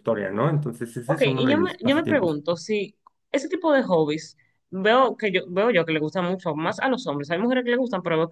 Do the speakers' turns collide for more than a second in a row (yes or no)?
yes